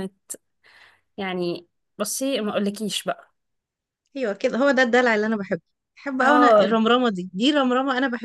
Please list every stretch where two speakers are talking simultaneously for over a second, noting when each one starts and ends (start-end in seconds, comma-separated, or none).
none